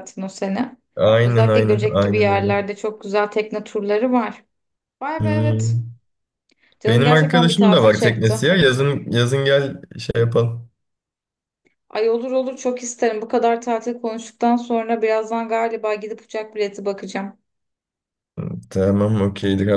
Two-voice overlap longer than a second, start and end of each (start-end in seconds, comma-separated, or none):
1.2-2.6, 6.9-8.4